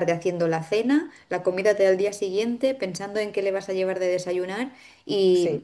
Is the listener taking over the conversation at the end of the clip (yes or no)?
no